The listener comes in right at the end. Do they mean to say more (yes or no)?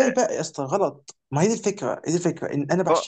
no